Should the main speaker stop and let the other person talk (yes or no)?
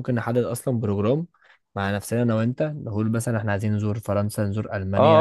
yes